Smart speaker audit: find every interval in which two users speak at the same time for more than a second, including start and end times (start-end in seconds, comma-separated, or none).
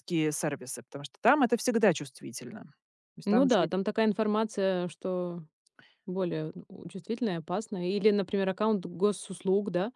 none